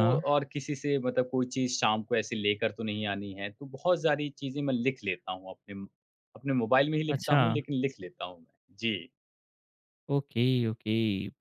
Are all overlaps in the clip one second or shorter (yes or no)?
yes